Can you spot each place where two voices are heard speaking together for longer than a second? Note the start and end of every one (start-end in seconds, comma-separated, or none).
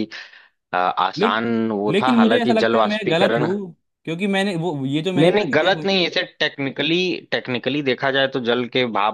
1.9-3.5